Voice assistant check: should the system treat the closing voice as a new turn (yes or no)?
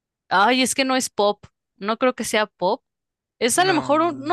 no